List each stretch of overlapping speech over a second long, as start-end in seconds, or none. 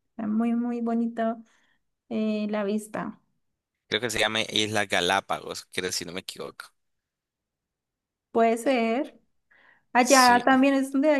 none